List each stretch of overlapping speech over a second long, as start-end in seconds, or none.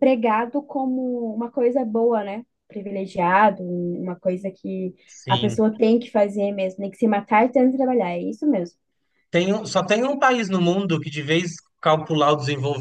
none